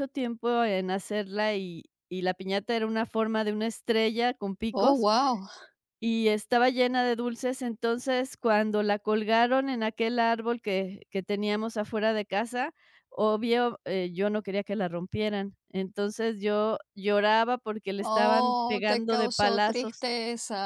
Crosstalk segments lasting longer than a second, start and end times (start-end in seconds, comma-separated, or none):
18.0-20.1